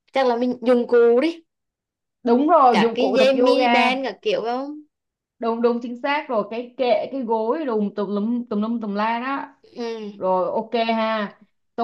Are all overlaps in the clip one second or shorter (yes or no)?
no